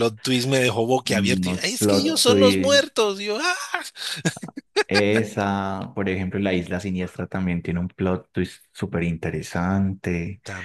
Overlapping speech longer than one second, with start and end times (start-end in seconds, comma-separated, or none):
1.2-2.9